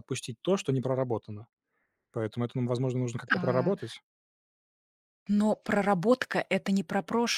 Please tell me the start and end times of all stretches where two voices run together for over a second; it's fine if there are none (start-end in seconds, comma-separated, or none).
none